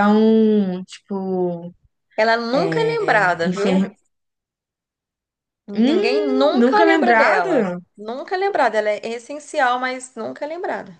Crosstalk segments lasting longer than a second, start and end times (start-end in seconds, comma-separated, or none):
2.5-3.8, 5.7-7.8